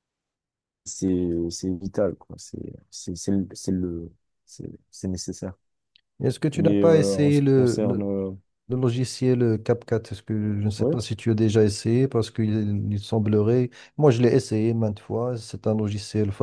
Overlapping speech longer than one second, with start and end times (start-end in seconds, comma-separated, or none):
6.5-8.1